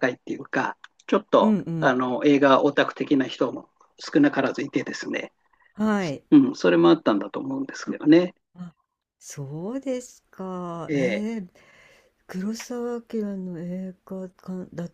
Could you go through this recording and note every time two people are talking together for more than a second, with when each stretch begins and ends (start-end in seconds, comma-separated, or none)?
none